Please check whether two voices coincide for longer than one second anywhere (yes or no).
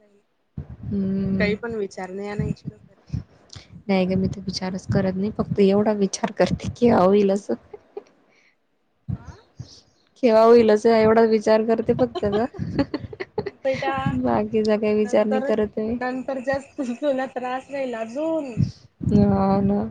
no